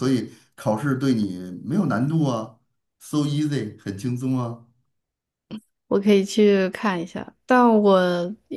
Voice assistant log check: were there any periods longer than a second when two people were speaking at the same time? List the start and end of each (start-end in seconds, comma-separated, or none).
none